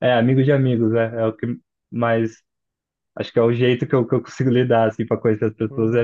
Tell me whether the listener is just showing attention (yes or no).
no